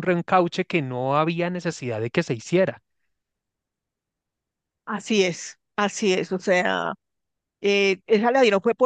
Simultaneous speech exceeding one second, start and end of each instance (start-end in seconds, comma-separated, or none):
none